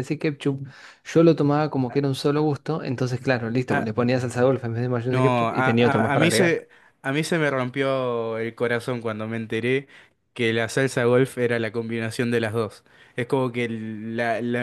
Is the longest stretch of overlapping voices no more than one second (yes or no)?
no